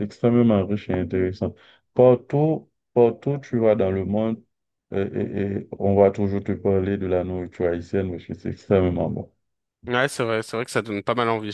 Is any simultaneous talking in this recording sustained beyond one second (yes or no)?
no